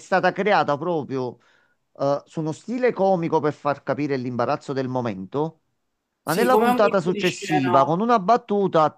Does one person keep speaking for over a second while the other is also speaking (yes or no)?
yes